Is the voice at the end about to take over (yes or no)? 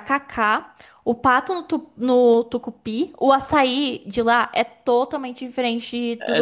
yes